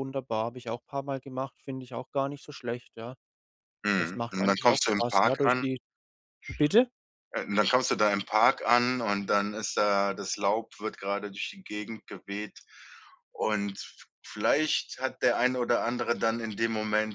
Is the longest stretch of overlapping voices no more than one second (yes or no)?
no